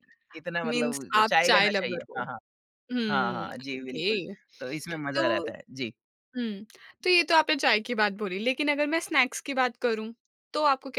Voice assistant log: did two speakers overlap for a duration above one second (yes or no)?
yes